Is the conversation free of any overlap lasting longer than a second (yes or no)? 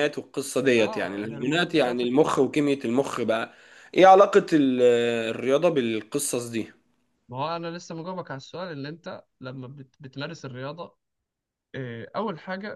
no